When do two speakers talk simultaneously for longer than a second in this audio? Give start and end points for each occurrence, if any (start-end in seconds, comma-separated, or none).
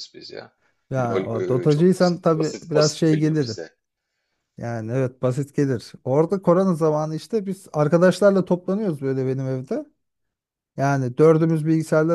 1.0-3.6